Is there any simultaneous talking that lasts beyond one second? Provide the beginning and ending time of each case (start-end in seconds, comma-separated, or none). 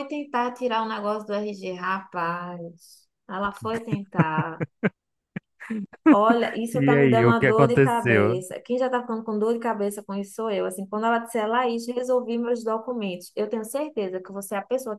6.7-8.4